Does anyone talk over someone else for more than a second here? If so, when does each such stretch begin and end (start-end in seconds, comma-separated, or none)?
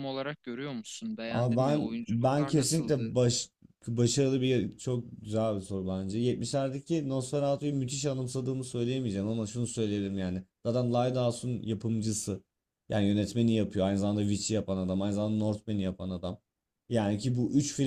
1.3-3.1